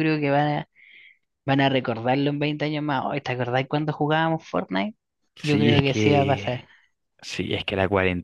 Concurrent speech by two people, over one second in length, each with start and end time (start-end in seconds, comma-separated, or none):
5.4-6.7